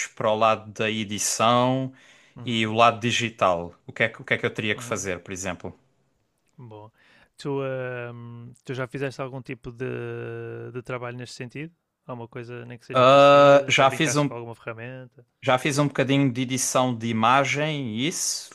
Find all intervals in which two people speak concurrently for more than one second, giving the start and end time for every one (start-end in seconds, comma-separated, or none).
12.9-14.3